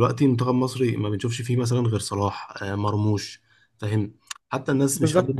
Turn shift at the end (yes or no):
no